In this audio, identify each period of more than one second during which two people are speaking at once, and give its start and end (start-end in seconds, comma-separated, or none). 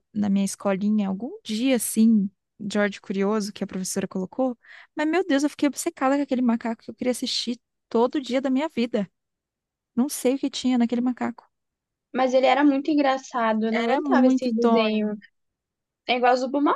13.7-15.2